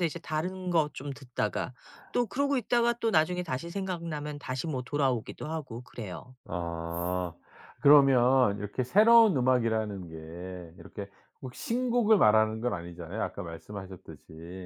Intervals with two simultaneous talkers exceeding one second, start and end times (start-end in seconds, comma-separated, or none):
none